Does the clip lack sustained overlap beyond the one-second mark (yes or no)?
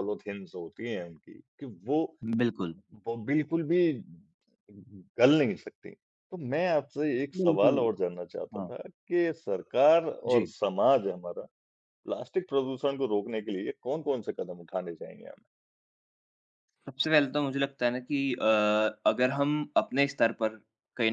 yes